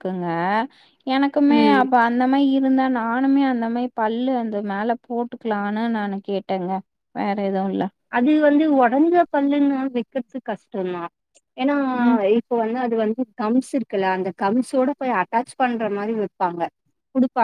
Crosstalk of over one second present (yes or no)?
no